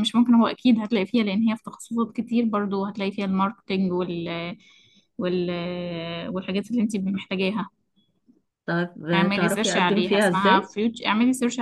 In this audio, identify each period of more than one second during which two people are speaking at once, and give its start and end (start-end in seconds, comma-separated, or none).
9.1-10.7